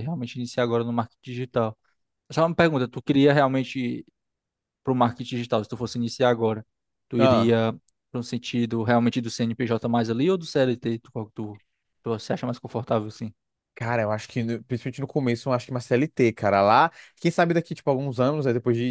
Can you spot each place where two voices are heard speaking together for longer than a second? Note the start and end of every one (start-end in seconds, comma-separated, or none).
none